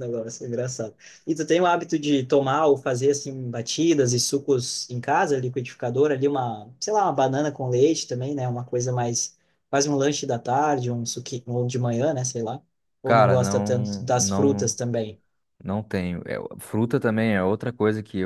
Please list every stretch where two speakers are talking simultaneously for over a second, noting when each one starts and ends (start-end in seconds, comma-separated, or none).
13.0-14.8